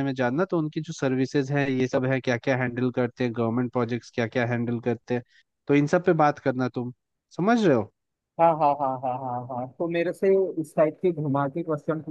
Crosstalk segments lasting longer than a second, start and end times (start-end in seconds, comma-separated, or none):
none